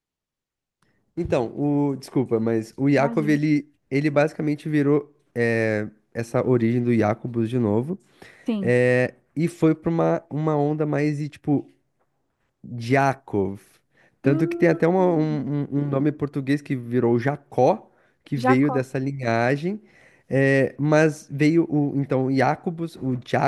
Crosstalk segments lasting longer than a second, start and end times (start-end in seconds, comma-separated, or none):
14.2-15.5